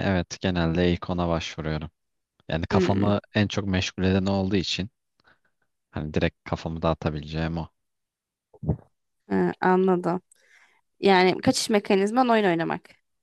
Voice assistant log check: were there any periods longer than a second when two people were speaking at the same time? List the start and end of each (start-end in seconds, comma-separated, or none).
none